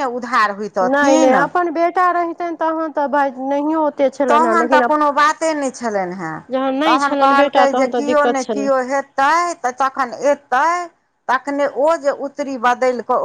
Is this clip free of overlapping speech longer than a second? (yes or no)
no